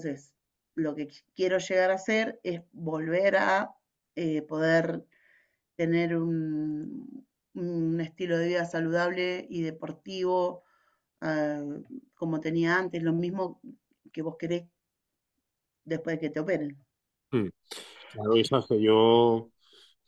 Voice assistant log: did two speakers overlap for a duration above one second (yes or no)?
no